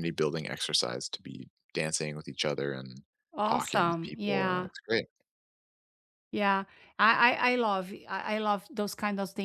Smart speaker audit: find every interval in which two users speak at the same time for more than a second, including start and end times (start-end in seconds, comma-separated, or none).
3.4-4.7